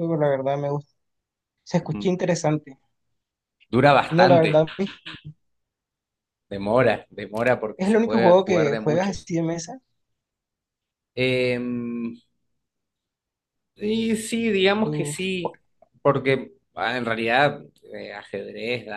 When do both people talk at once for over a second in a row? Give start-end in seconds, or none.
7.8-9.3